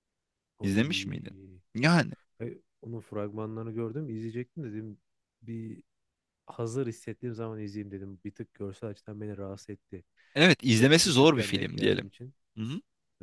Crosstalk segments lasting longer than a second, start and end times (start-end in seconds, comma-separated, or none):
10.7-12.1